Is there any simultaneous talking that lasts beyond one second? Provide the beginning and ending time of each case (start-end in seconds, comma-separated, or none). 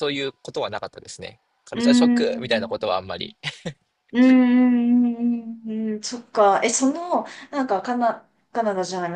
1.7-2.9